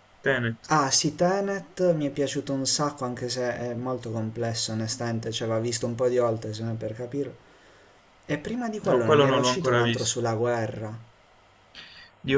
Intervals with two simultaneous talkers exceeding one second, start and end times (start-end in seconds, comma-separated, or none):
8.9-10.2